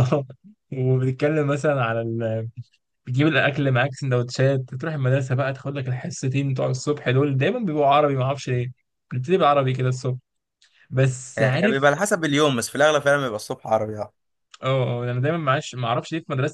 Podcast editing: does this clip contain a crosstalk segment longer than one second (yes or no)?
no